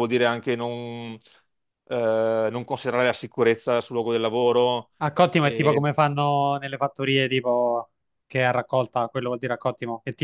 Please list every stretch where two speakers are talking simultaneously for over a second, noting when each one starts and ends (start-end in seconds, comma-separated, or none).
none